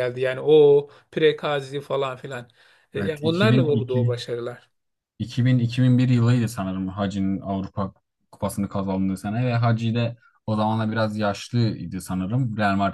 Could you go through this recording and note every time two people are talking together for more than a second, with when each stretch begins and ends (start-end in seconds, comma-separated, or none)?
3.0-4.2